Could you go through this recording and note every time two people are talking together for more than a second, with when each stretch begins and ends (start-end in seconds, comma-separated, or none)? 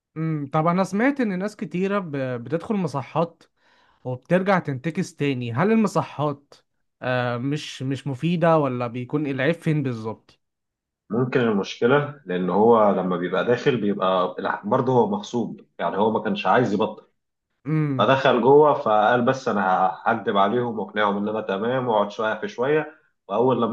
none